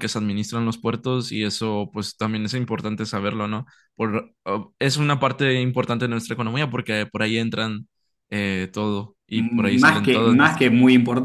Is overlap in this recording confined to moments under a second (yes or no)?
no